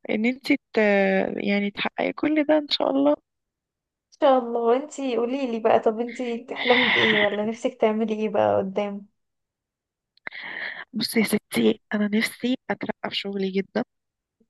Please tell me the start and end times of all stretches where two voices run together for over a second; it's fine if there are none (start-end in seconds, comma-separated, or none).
none